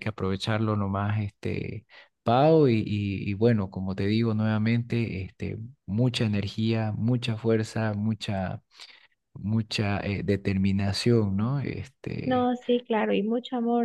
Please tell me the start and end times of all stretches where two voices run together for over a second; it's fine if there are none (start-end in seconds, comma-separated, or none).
none